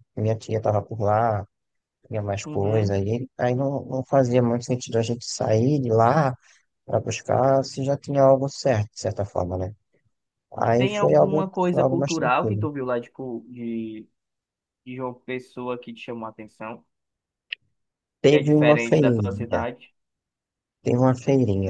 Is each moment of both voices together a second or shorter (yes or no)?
no